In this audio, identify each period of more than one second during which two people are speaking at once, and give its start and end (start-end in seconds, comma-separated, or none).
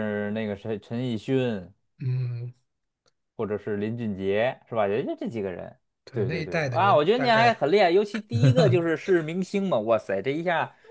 6.1-7.6